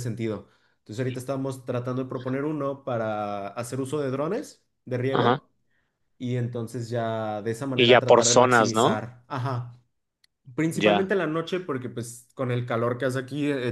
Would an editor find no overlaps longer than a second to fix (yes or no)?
no